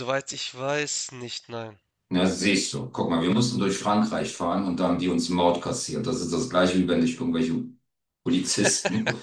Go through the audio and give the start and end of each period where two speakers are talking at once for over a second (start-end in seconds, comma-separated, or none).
none